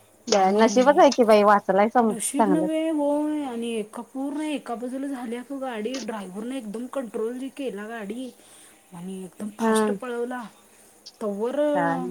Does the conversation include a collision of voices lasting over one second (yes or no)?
no